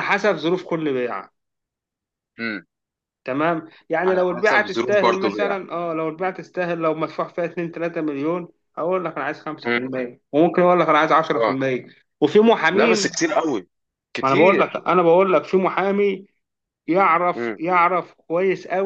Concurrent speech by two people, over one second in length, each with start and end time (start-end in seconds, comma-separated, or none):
4.1-5.6